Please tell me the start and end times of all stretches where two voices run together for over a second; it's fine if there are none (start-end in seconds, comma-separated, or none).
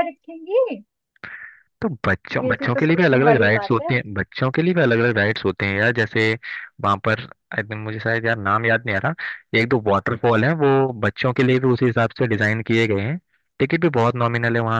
2.4-3.9